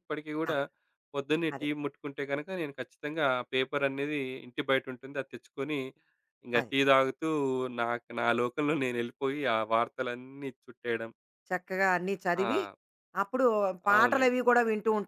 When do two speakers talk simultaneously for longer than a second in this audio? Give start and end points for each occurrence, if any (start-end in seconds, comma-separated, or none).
none